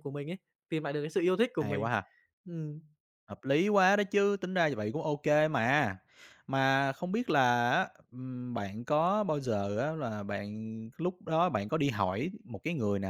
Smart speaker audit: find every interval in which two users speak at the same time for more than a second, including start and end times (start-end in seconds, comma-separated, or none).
none